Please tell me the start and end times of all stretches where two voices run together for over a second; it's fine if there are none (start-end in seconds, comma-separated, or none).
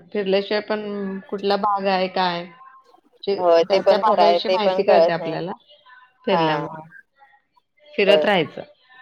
3.4-5.4